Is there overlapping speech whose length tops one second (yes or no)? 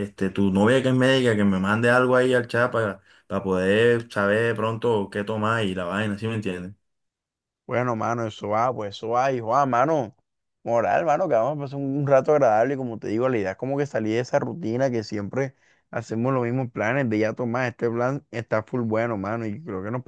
no